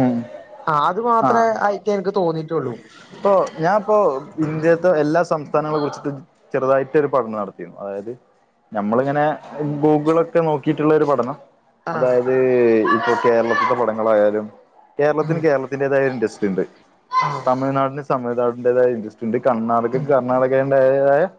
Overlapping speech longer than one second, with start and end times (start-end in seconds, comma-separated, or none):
none